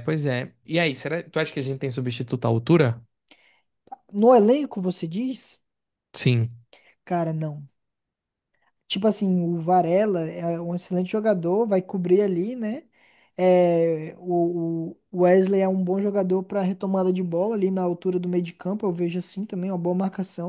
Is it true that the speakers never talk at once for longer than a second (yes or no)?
yes